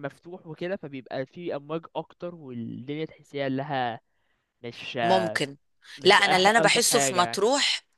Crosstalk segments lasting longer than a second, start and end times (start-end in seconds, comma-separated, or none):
6.0-7.4